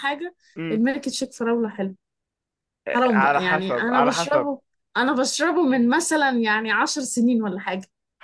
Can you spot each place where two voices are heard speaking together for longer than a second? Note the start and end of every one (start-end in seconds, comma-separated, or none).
3.1-4.5